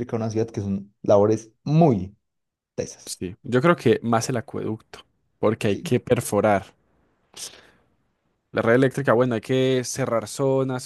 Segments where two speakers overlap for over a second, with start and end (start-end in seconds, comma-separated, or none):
none